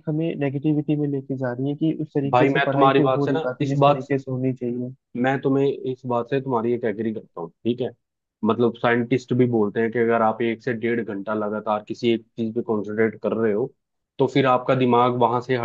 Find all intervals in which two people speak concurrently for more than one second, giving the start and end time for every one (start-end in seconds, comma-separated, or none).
2.3-4.1